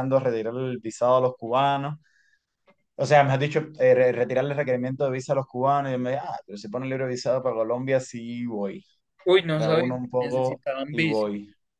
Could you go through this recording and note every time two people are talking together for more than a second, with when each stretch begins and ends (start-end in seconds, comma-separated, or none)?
9.5-11.3